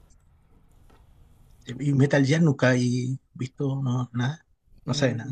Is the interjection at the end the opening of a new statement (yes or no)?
yes